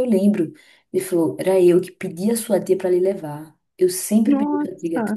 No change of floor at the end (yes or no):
yes